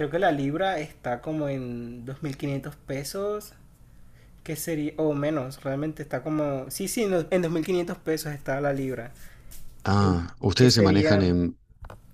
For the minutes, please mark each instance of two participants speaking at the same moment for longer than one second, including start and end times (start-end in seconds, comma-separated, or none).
10.0-11.4